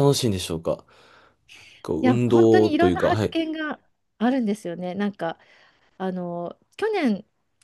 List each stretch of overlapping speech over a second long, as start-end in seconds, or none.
2.0-3.3